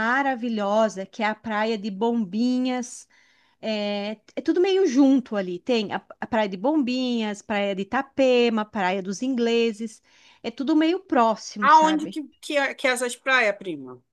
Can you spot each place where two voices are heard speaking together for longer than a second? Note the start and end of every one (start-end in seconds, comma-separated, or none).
none